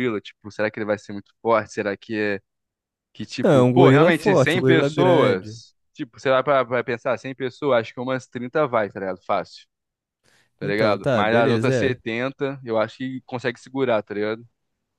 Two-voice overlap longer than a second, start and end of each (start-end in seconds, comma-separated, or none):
3.4-5.6, 10.6-12.0